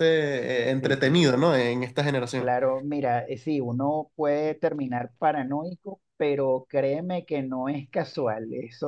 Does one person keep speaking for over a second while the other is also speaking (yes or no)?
no